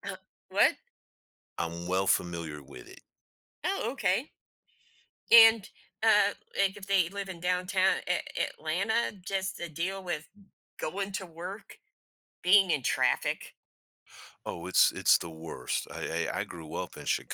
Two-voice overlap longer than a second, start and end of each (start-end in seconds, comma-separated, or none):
none